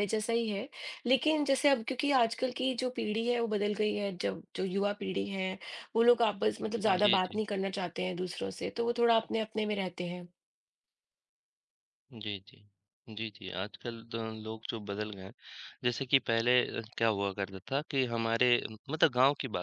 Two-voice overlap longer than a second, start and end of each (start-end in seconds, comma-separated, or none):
none